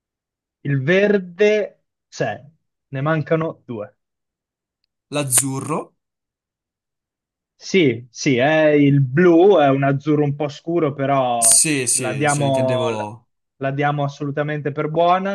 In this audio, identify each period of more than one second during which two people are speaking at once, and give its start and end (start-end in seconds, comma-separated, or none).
11.4-13.1